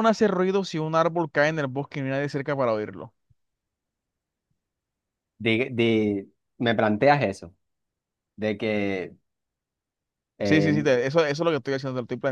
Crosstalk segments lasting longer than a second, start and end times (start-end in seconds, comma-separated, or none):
none